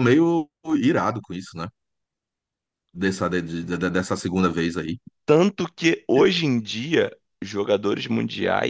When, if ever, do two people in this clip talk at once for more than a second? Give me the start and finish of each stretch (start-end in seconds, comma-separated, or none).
none